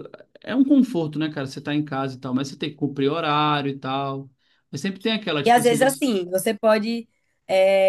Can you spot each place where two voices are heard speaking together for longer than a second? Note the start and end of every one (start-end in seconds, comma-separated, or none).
none